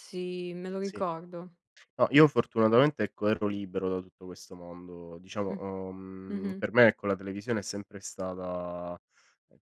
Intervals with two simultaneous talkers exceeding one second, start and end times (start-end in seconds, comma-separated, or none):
none